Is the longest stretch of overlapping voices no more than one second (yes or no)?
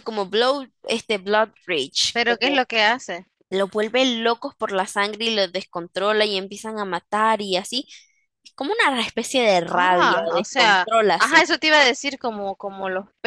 no